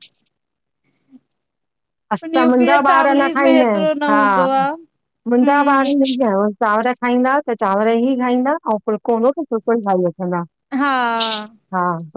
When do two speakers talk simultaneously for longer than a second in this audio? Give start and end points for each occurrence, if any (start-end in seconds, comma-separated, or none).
2.3-4.2